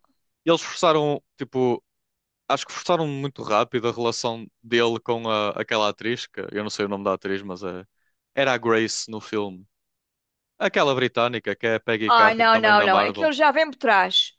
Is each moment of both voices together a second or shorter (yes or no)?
no